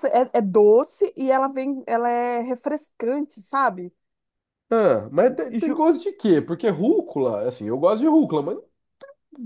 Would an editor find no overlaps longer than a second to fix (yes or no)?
yes